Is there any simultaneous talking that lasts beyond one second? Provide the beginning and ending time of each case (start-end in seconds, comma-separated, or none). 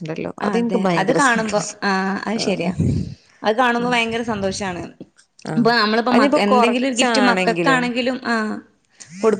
6.1-7.9